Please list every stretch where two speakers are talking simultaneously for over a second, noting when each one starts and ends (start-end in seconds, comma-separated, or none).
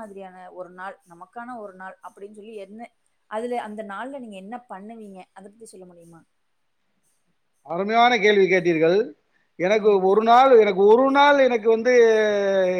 none